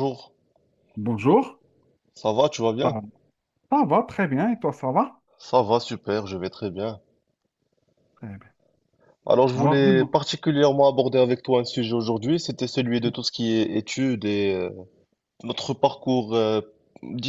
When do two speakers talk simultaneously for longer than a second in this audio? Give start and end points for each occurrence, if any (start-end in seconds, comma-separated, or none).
none